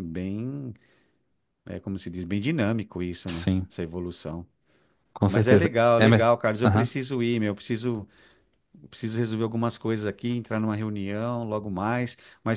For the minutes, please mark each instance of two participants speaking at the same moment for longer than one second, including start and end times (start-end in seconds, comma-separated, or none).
5.3-6.9